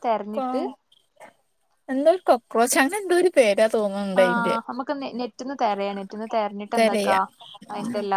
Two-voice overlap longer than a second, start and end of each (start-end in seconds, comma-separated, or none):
none